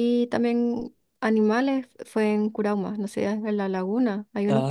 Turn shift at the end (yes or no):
yes